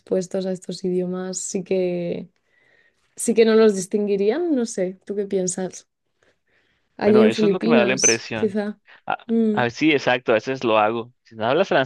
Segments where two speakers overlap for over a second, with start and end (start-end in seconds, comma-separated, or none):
7.0-8.6